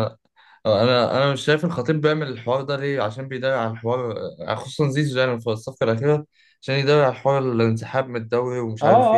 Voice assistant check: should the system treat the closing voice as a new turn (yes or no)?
yes